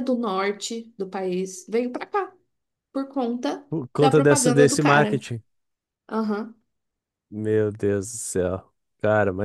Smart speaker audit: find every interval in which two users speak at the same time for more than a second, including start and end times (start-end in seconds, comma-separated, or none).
3.7-5.2